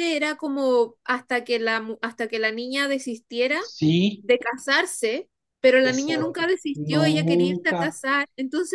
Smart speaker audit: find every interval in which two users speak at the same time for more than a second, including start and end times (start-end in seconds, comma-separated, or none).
5.8-8.0